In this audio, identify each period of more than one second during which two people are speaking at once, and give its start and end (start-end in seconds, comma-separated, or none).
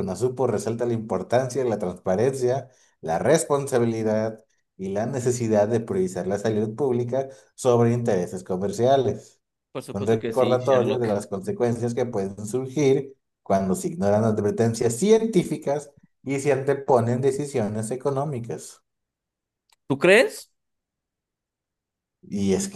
9.9-11.2